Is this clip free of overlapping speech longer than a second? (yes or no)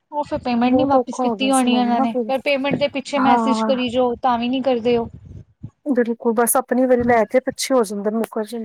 no